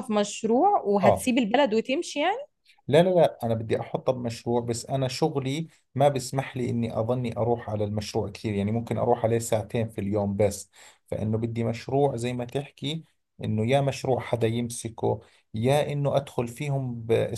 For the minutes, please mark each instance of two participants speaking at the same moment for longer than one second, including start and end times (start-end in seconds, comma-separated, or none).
none